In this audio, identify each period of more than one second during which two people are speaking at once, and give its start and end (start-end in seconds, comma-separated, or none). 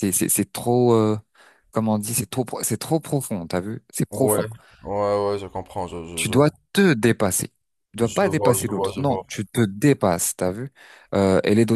8.0-9.2